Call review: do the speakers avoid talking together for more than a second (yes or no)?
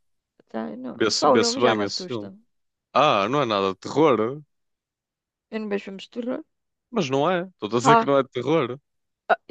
no